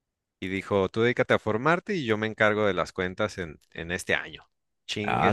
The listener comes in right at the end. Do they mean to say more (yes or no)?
yes